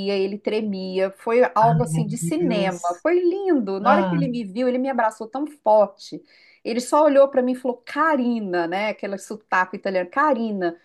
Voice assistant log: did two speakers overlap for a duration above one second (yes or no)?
yes